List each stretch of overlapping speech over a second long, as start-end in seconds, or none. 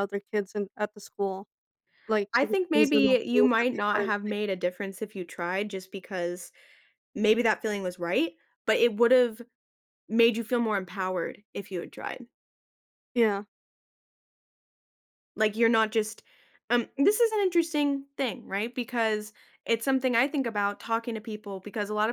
2.3-4.3